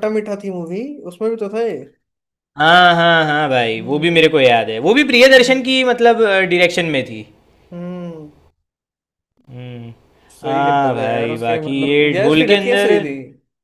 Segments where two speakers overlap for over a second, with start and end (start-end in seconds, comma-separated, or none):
10.5-12.9